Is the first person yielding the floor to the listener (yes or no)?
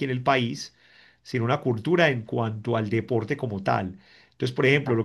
no